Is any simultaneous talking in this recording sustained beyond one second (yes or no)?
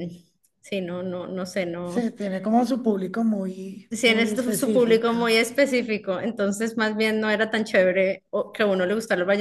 yes